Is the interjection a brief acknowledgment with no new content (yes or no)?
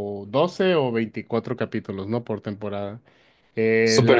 no